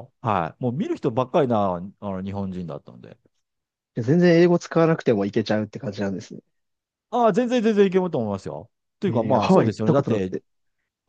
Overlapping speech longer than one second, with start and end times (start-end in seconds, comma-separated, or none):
9.1-10.3